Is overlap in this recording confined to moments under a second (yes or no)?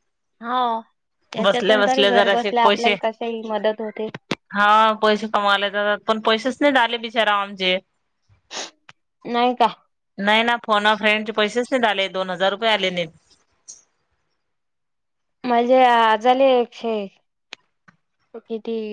no